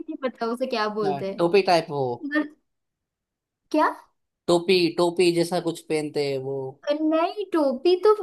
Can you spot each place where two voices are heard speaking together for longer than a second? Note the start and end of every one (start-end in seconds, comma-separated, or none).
none